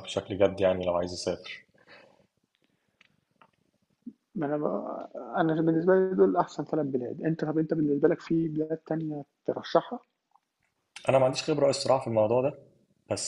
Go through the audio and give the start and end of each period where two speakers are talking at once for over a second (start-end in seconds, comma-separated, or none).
none